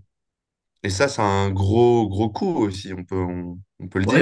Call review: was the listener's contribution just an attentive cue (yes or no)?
no